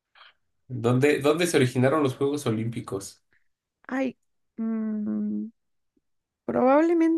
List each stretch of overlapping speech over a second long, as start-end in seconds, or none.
none